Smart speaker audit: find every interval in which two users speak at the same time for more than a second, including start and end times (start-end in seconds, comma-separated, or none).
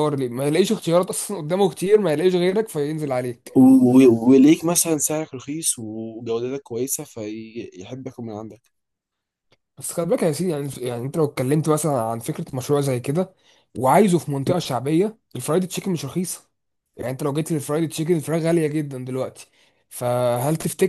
none